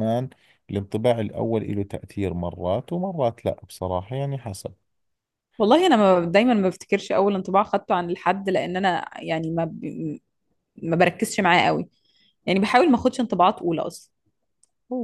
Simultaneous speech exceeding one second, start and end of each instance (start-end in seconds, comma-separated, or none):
none